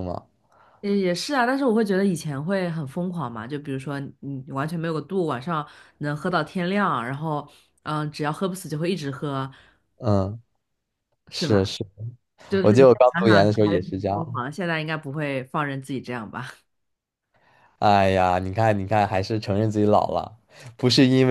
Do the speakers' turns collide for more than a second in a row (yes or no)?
yes